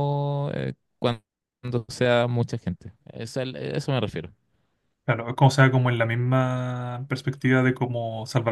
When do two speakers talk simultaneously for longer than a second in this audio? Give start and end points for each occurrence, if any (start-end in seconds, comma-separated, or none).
none